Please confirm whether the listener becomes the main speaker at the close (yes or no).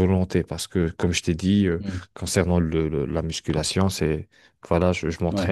no